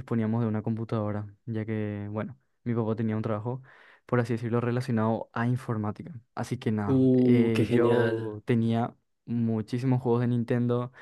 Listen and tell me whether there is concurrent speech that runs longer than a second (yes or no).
yes